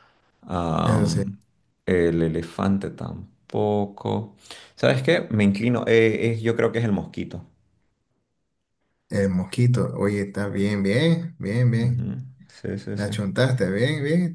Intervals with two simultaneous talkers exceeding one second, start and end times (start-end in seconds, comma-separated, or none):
none